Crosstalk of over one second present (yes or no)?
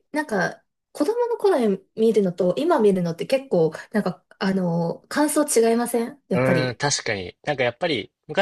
no